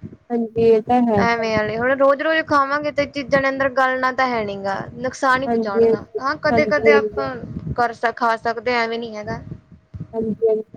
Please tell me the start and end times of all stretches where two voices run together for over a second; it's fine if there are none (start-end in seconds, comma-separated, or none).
5.5-7.3